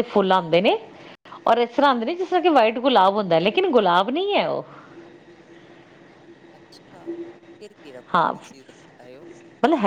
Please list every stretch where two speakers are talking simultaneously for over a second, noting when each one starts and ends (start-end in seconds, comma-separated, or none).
none